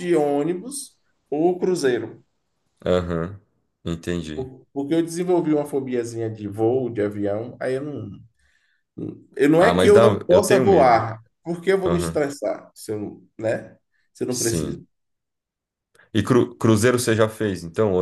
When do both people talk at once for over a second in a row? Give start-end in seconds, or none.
9.6-11.0